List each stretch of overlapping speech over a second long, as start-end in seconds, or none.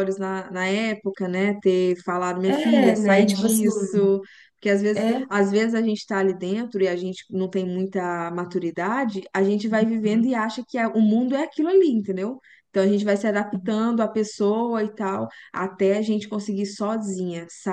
2.5-3.6